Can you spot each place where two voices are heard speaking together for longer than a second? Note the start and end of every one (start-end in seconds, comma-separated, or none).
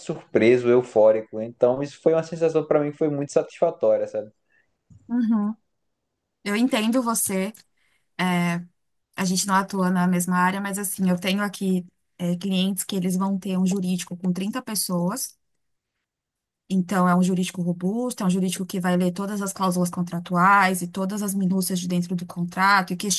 none